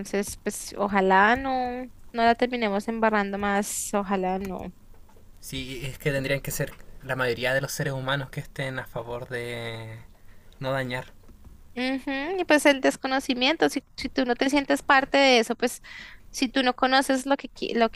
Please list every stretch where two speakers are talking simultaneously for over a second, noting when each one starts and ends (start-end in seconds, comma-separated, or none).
none